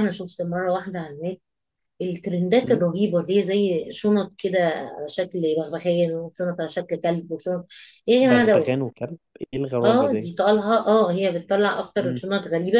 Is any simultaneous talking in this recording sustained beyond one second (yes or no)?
no